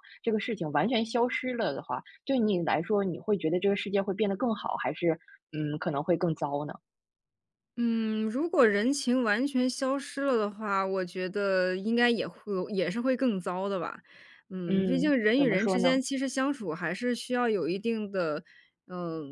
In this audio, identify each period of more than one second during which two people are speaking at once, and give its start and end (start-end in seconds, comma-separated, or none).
14.7-16.0